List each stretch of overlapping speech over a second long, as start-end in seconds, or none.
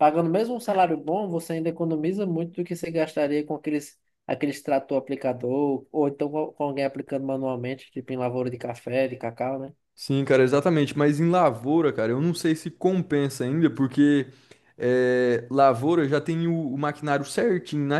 none